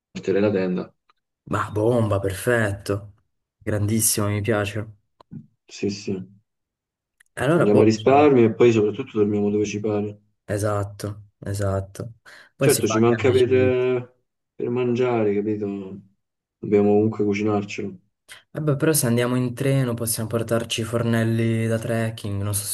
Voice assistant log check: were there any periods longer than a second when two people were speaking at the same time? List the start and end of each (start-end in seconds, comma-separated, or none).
12.6-13.9